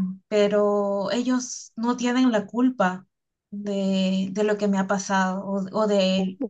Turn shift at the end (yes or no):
no